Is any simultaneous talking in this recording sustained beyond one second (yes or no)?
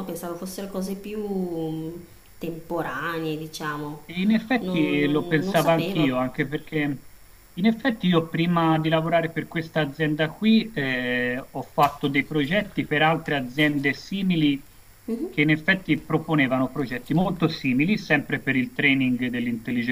yes